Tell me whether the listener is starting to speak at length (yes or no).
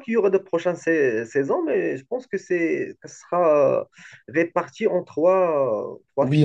yes